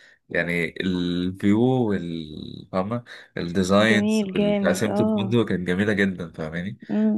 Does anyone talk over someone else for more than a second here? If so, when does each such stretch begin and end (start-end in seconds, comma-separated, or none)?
3.9-5.3